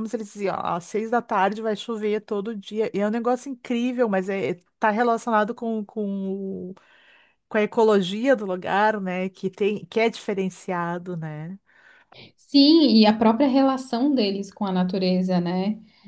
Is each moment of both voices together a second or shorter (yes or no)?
yes